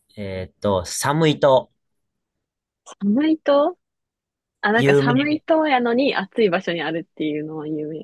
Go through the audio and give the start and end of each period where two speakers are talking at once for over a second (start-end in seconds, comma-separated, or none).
none